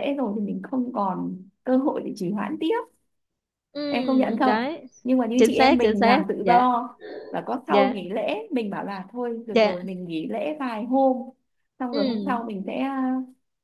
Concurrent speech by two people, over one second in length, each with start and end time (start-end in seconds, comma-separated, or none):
5.4-6.7